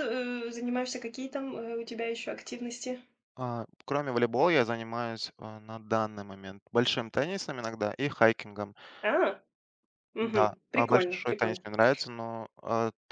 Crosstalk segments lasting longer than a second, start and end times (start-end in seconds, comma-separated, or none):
10.2-11.6